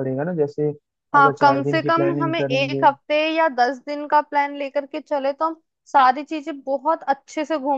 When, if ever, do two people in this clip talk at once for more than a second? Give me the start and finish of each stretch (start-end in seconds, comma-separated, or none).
1.1-2.9